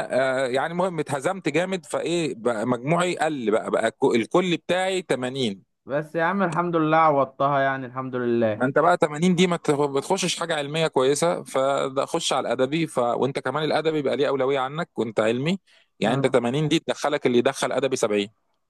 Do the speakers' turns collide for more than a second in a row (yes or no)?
no